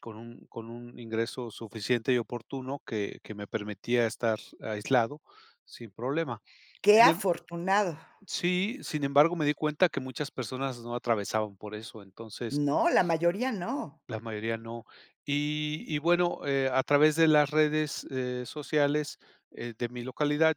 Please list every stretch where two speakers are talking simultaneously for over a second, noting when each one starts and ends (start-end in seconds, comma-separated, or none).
none